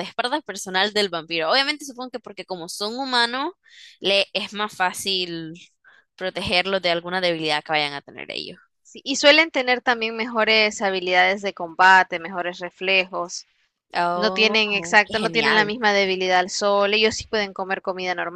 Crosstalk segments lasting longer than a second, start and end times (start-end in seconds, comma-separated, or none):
14.1-15.8